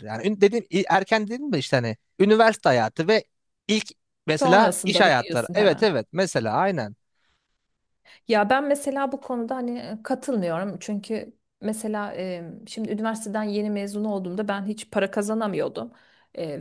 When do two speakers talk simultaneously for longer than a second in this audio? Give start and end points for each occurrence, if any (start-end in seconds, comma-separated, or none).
4.4-5.8